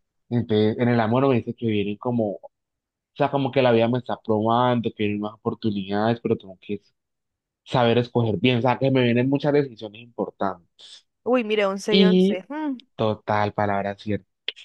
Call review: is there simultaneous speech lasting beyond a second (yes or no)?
no